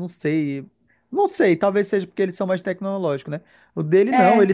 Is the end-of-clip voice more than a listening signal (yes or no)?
no